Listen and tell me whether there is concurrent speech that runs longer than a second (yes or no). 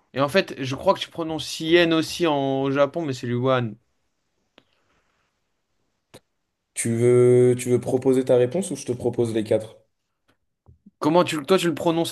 no